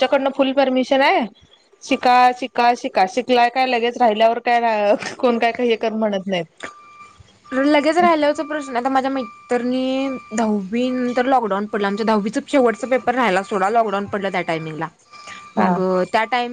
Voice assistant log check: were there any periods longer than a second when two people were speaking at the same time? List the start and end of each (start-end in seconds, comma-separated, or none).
none